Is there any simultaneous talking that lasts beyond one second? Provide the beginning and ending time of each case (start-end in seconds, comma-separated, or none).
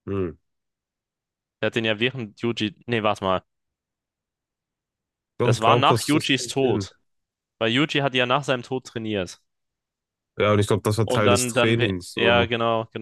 5.4-6.9, 11.1-12.5